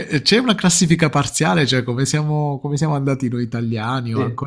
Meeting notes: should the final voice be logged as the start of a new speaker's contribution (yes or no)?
yes